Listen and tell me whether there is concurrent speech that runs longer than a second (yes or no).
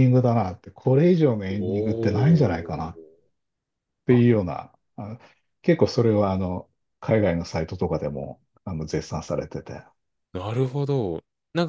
yes